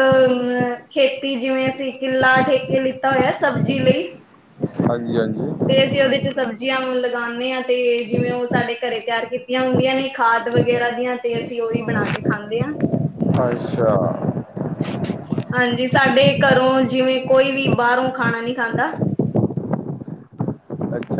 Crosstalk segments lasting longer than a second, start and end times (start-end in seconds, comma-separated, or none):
none